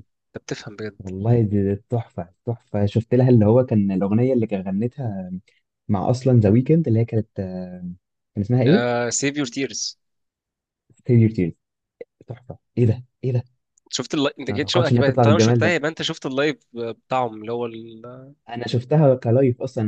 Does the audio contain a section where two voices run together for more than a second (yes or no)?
yes